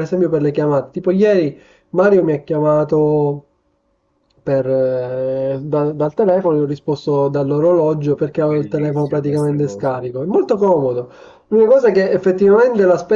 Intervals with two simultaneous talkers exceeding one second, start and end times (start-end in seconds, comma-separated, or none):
8.4-9.9